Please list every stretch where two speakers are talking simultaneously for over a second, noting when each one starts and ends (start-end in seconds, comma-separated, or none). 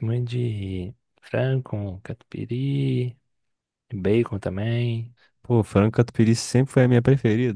none